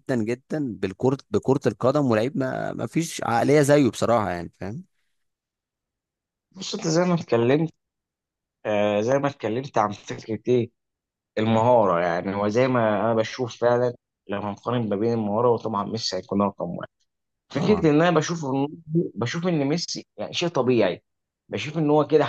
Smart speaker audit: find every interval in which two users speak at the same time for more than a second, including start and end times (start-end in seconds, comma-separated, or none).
none